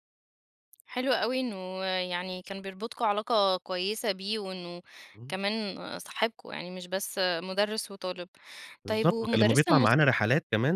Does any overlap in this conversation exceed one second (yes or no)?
yes